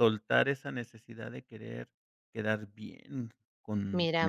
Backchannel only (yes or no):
no